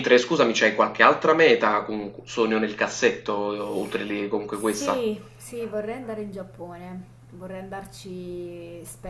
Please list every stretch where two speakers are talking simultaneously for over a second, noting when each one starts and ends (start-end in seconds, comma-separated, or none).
none